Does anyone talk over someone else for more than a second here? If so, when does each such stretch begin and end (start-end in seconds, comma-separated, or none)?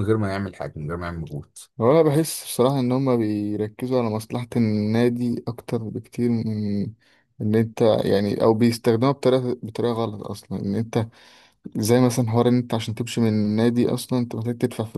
none